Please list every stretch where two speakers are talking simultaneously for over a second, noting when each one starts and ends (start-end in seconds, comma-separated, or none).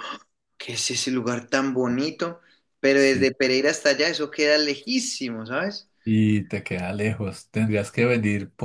none